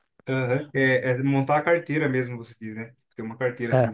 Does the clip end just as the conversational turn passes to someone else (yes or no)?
no